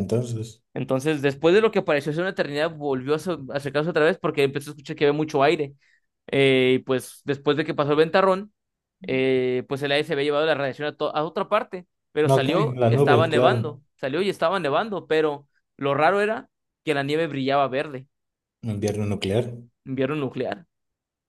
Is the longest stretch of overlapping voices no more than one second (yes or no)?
no